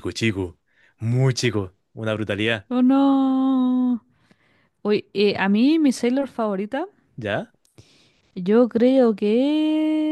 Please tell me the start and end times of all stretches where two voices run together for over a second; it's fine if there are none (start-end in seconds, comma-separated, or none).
none